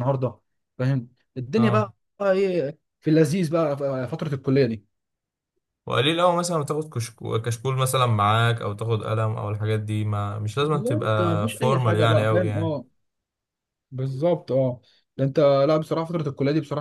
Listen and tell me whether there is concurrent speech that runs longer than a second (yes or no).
yes